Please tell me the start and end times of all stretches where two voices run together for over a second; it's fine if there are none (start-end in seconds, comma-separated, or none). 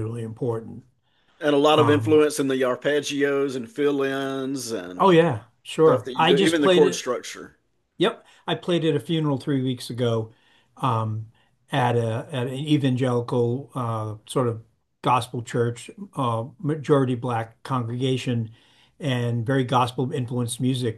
5.8-7.2